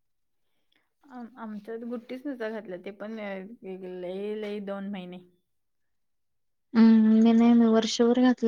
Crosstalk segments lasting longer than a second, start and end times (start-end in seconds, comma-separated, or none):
none